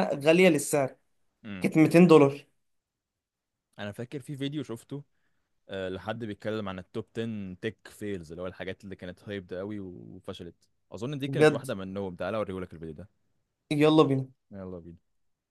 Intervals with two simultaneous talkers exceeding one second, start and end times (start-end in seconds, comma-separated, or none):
none